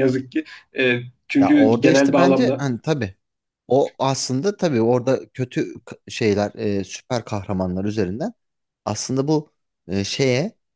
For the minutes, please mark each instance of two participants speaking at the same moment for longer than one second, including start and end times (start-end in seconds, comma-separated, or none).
1.4-2.7